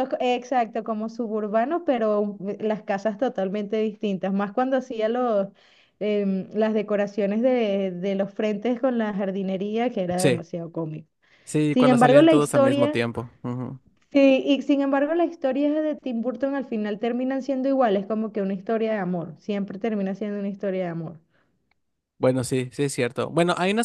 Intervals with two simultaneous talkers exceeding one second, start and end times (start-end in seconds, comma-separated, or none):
11.7-13.0